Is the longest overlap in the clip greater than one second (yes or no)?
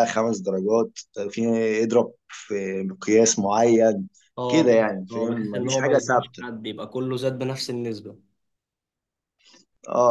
yes